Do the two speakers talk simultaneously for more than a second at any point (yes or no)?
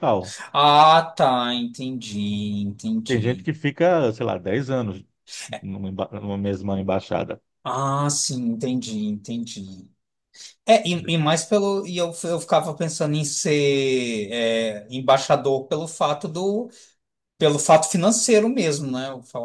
no